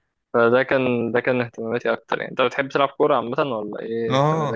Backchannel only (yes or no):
no